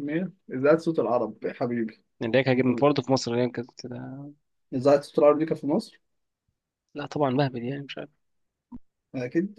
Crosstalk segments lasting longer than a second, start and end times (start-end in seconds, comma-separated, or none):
none